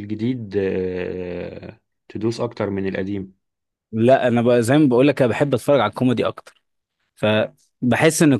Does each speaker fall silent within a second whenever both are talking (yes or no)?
yes